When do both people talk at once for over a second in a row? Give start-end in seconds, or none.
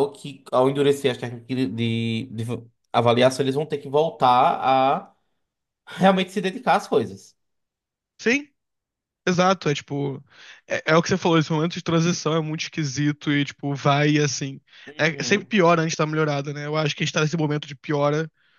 none